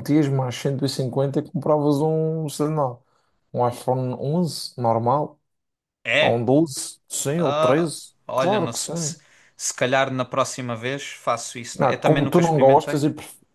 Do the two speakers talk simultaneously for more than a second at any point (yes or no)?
yes